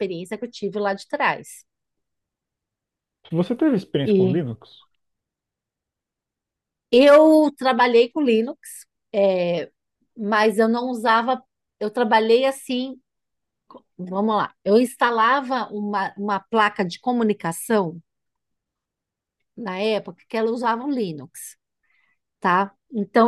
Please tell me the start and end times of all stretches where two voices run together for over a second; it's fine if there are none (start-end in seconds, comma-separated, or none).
none